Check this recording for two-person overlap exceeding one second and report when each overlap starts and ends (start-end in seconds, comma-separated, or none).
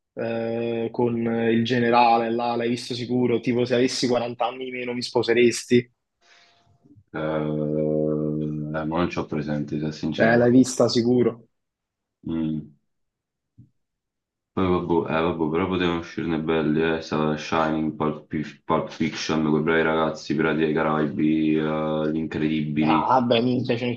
none